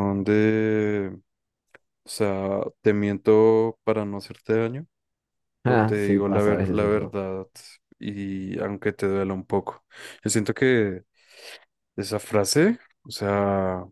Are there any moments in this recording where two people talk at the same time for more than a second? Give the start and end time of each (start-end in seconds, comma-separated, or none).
5.6-7.2